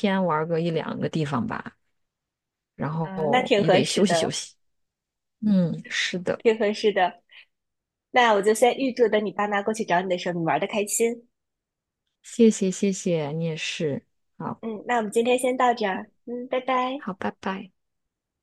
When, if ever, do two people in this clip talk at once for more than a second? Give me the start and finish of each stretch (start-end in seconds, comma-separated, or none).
3.0-4.3